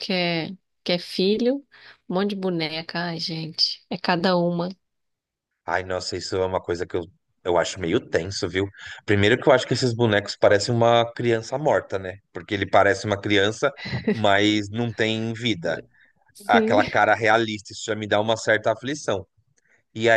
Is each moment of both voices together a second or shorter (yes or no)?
yes